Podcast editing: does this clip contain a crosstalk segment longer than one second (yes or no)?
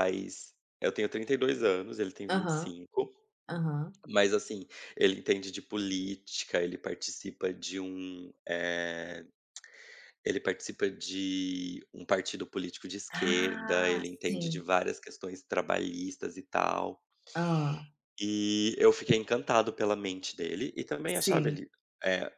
yes